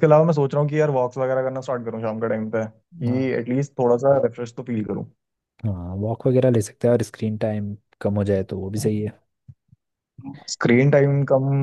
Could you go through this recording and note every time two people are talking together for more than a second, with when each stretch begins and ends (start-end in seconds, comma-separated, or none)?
none